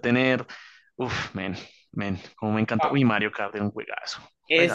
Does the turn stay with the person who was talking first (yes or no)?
no